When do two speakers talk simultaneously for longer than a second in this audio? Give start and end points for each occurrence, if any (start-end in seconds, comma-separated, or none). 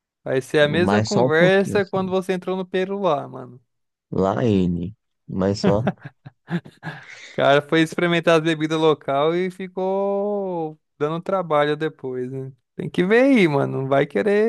0.7-2.1